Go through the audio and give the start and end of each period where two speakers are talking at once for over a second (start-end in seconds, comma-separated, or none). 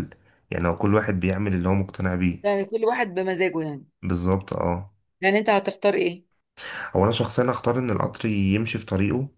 none